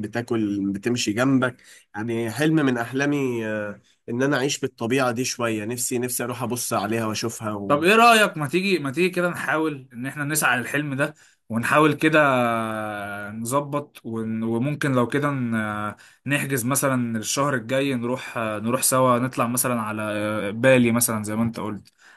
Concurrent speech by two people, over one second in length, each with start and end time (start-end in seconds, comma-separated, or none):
none